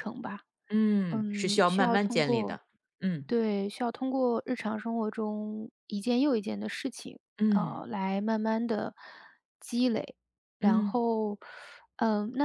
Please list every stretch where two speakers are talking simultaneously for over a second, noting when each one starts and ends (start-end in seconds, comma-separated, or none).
1.1-2.6